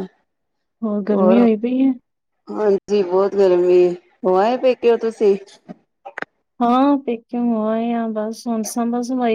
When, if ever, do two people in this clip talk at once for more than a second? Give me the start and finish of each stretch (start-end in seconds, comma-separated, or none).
none